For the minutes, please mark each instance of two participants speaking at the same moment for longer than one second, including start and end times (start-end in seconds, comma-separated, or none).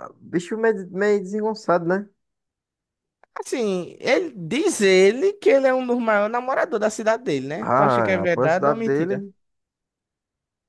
7.6-9.2